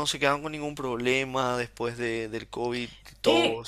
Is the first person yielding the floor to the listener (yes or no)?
yes